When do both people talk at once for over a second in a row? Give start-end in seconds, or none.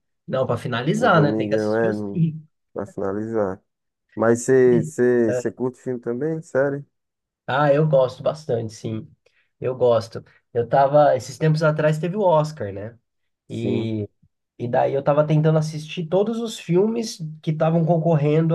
0.9-2.3